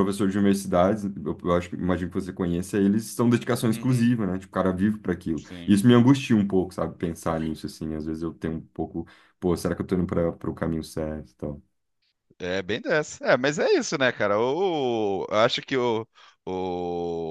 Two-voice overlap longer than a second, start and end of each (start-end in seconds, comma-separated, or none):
none